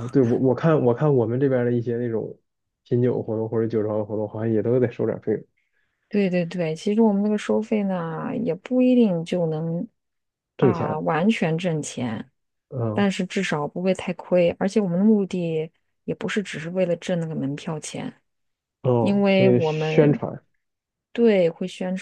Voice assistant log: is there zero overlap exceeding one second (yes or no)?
no